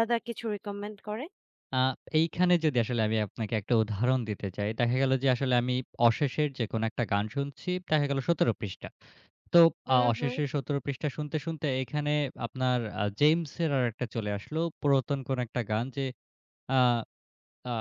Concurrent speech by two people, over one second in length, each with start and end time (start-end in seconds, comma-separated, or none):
none